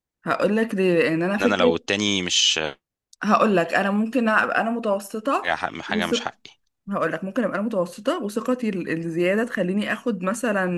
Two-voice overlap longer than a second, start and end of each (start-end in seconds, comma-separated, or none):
none